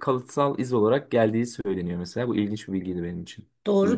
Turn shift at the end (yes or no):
yes